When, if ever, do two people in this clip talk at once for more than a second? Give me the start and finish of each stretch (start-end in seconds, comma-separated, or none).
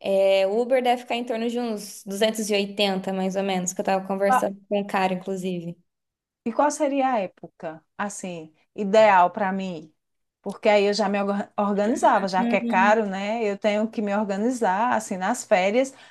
none